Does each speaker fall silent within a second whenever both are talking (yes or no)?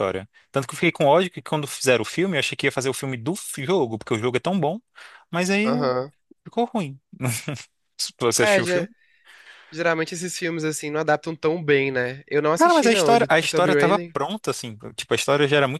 no